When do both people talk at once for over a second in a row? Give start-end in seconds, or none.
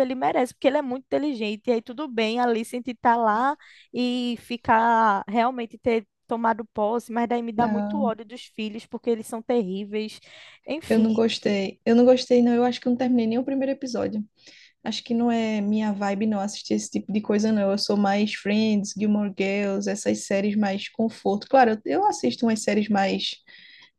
none